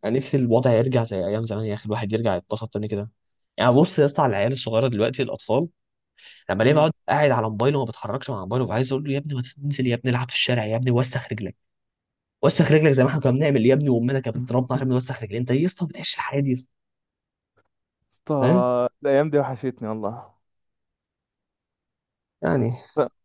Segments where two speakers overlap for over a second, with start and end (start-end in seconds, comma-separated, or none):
none